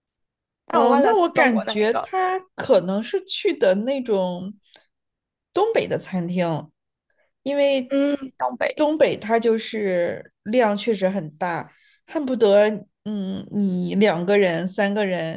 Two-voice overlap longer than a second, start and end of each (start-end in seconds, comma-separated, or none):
0.7-2.1